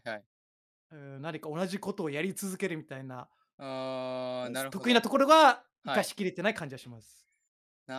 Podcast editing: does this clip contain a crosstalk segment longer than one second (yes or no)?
no